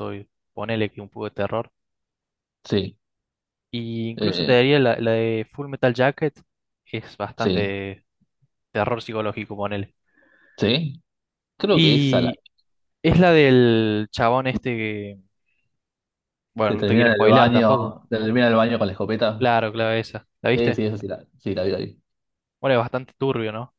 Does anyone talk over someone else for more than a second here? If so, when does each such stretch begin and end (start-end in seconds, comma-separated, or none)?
16.6-18.0